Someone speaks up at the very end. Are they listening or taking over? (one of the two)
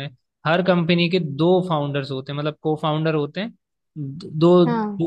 listening